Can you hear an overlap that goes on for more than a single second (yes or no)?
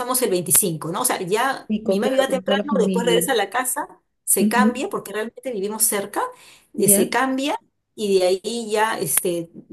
yes